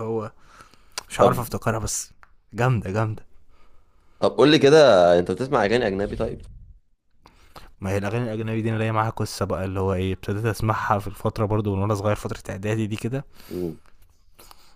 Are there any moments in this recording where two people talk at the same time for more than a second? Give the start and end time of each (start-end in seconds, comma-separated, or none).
none